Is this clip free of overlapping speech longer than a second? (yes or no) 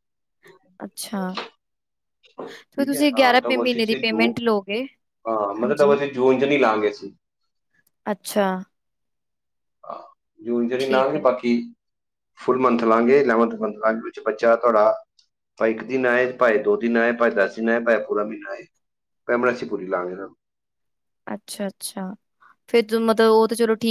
no